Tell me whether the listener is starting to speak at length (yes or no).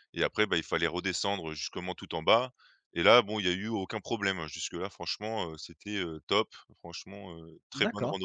yes